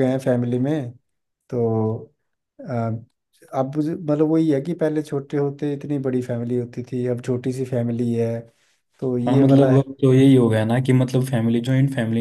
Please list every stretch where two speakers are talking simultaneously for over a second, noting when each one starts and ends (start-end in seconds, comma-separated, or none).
none